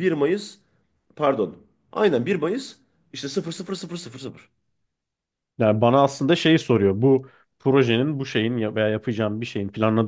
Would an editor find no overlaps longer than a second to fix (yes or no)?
yes